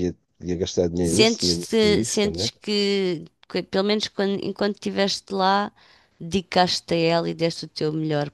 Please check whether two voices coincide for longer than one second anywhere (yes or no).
yes